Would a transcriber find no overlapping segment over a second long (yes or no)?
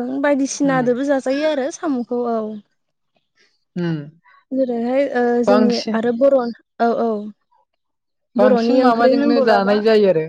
no